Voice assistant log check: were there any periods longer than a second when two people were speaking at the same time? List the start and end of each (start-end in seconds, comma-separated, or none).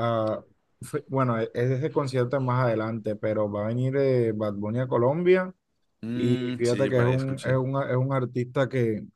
6.1-7.6